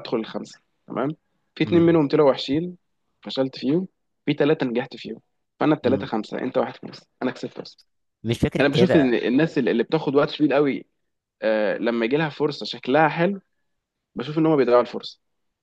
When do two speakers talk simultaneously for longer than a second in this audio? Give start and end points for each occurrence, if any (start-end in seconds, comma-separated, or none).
none